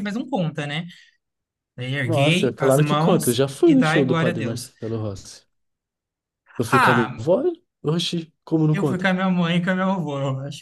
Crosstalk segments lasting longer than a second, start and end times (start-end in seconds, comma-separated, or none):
2.0-4.7